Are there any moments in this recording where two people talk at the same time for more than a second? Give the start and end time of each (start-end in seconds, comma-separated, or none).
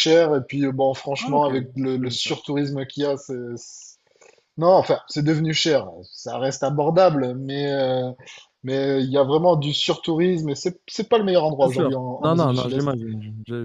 1.2-2.5, 11.6-12.9